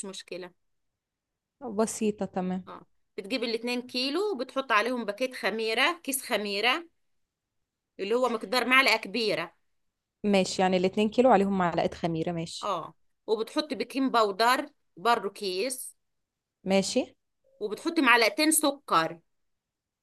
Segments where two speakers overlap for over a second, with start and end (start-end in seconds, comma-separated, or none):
none